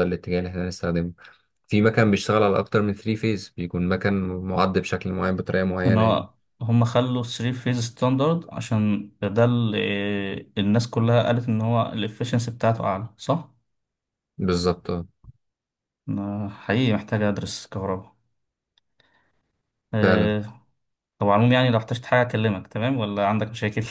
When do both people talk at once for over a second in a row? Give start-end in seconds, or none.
none